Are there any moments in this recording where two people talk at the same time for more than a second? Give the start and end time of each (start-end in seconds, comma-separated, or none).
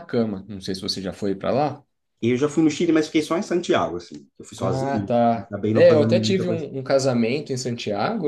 4.6-6.7